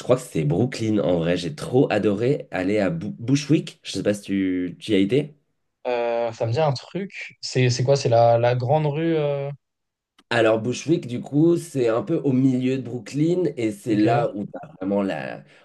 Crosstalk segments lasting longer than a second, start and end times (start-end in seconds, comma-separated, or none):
none